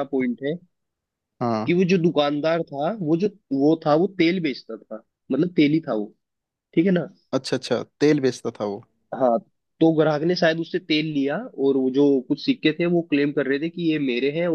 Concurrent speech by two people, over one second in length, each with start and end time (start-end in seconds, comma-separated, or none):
none